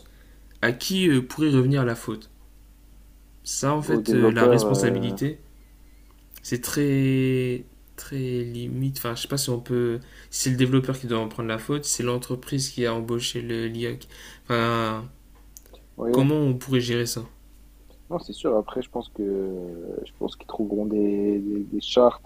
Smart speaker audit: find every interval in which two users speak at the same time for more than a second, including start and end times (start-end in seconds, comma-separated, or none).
3.9-5.2